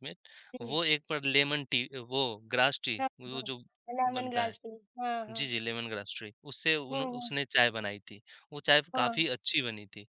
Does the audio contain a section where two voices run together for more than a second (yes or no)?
no